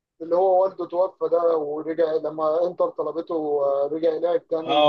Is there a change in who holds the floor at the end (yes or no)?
yes